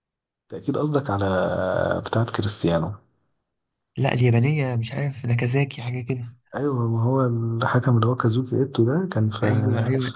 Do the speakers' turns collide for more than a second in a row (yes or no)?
no